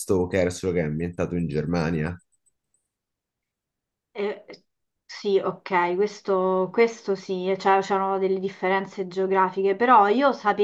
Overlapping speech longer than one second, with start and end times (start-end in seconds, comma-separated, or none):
none